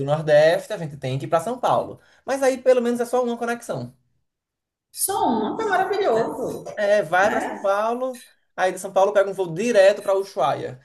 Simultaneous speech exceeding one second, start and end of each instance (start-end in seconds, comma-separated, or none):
none